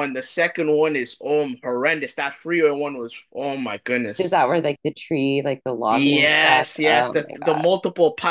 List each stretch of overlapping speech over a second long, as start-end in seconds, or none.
5.9-7.7